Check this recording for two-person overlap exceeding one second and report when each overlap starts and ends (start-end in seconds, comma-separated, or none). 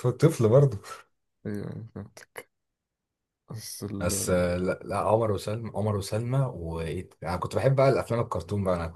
none